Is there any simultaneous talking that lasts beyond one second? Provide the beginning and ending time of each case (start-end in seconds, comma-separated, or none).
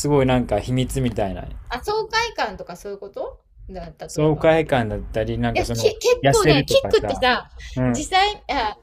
5.5-7.2